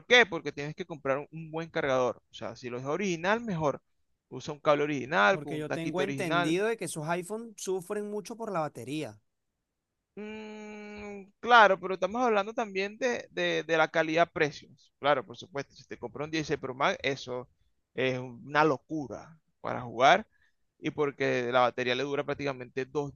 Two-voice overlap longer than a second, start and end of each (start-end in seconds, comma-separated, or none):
5.3-6.6